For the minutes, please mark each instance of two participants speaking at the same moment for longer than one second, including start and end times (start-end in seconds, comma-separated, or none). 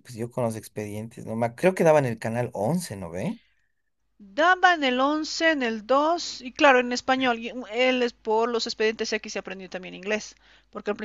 none